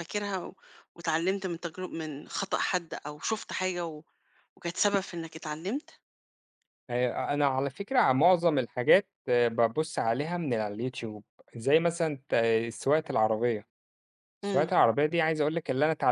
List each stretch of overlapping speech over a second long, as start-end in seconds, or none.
none